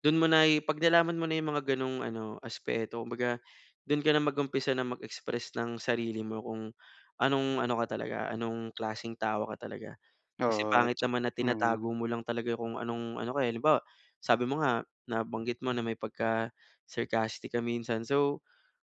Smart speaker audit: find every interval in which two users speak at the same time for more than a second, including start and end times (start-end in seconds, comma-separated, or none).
10.5-11.9